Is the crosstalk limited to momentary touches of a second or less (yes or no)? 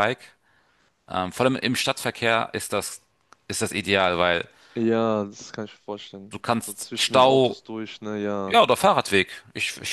no